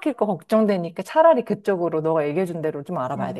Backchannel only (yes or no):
no